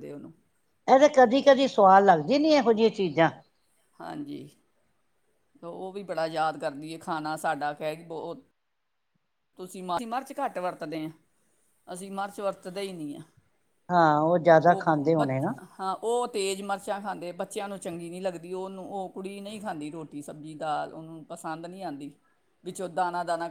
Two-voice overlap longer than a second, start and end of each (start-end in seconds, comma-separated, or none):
none